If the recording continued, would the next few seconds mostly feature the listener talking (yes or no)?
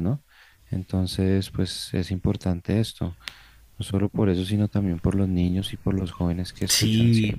yes